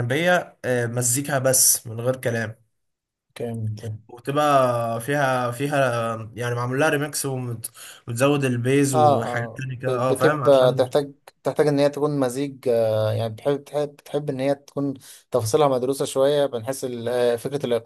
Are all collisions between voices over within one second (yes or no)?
no